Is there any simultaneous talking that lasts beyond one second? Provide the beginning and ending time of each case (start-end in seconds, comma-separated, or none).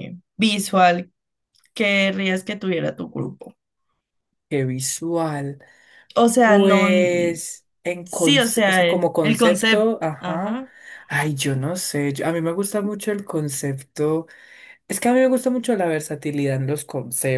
8.0-10.6